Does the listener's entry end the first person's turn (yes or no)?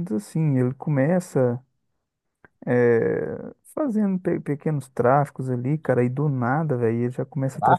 no